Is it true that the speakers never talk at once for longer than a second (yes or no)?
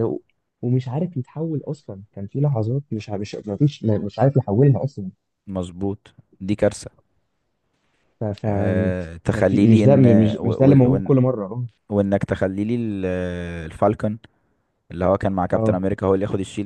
no